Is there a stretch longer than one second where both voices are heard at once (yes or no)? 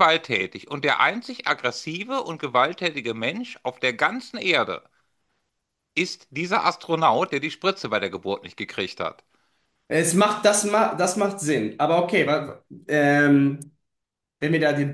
no